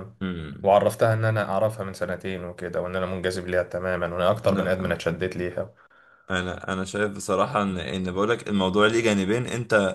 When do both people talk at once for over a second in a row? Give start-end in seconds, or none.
none